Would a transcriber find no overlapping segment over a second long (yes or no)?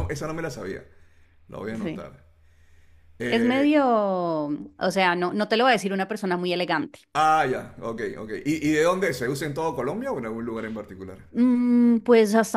yes